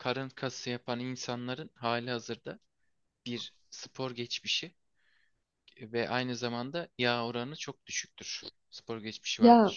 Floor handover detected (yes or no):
no